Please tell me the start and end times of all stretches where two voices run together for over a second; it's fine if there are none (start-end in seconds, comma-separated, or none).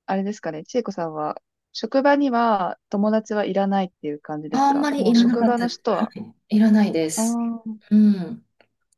4.5-6.0